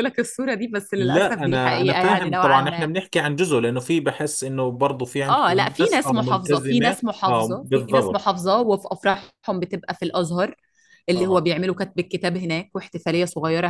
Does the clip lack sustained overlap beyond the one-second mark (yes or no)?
no